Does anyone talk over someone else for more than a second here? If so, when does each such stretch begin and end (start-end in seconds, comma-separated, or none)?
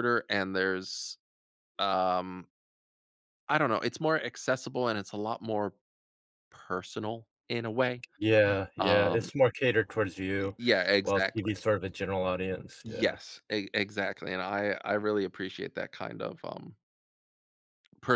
none